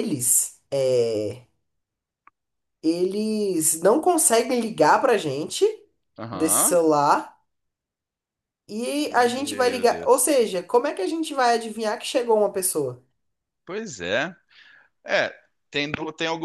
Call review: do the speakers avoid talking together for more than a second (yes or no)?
no